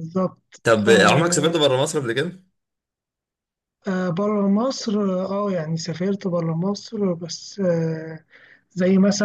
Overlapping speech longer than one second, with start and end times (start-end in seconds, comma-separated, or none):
none